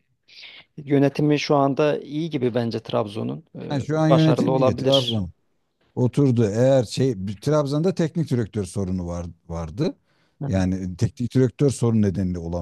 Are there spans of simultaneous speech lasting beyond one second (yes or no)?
yes